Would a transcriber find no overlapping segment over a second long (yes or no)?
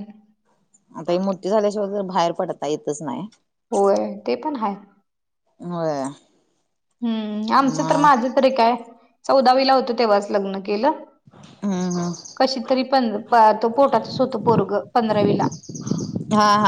yes